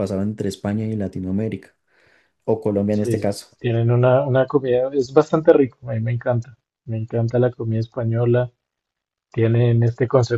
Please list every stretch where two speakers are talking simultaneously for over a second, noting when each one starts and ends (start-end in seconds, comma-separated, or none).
none